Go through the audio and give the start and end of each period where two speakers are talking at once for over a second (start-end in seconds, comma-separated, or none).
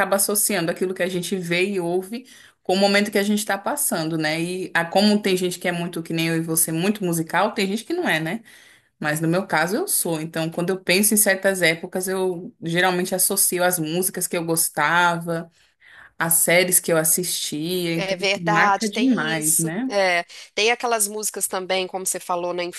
18.0-19.9